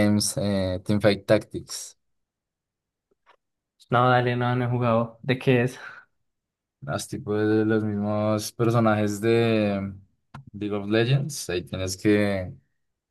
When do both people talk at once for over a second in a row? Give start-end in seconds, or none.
none